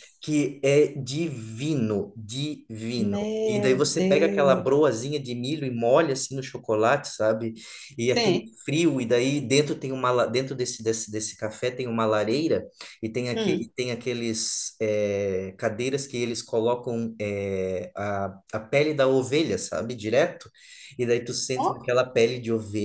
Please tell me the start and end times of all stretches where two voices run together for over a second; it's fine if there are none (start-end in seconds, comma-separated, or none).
3.0-4.7